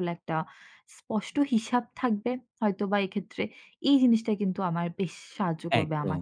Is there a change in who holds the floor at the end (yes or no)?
no